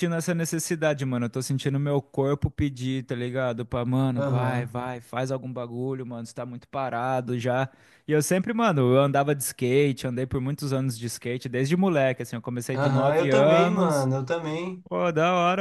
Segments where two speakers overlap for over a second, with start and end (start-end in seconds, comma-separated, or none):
12.7-14.1